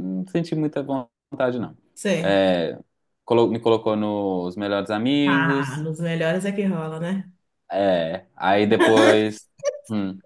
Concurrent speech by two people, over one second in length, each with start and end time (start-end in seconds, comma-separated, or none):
none